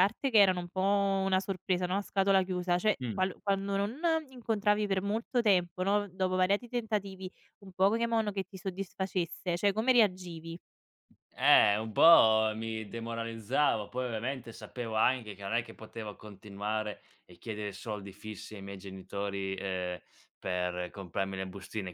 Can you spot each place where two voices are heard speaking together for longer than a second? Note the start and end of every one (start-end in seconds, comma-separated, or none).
none